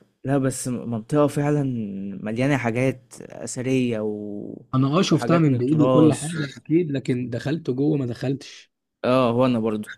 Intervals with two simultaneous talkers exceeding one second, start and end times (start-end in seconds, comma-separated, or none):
5.1-6.5